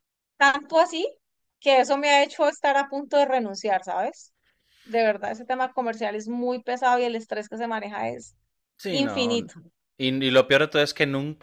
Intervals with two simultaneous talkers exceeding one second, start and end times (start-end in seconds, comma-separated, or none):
none